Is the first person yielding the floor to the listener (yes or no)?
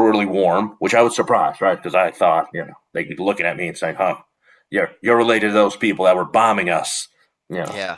no